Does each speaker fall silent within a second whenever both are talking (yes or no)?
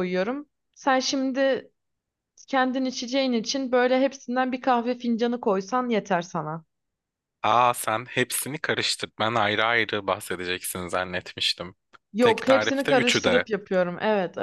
no